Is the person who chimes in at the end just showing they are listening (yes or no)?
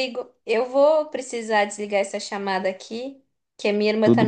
yes